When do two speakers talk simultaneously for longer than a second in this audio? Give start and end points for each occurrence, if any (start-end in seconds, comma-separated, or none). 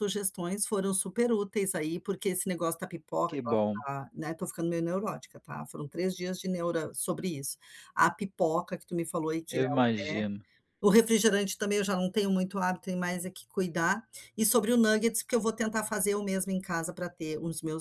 none